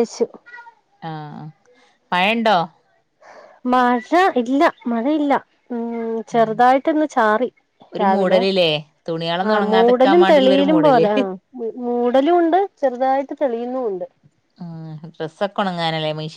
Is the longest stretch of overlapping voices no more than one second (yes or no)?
no